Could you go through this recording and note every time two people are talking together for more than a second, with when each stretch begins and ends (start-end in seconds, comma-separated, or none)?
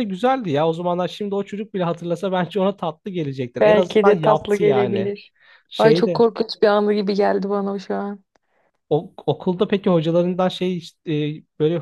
3.6-5.1